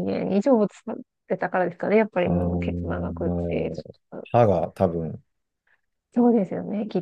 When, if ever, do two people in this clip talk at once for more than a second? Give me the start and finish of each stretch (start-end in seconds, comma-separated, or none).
2.2-3.7